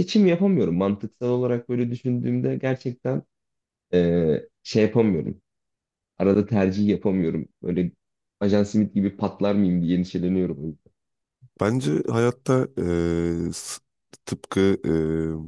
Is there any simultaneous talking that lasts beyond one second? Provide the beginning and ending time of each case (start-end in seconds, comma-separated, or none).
none